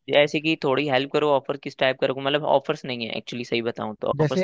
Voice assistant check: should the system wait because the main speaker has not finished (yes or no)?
no